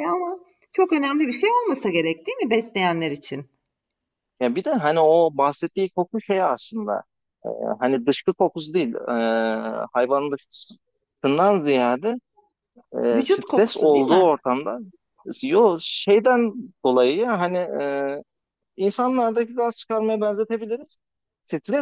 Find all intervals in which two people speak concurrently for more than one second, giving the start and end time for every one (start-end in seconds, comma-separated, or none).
13.1-14.3